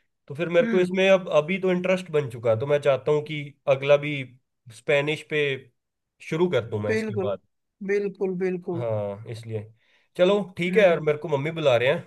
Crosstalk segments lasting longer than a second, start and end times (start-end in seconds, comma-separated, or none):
none